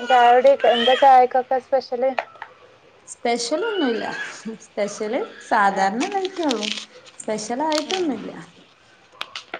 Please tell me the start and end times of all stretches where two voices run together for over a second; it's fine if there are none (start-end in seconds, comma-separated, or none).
none